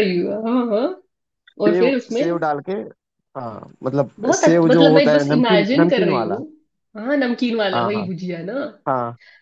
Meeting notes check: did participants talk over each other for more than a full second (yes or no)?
yes